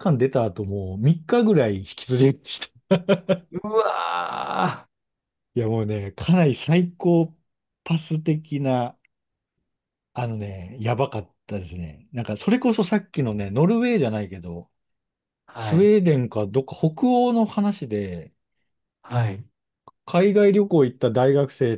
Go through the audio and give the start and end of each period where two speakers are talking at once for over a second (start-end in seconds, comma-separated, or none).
none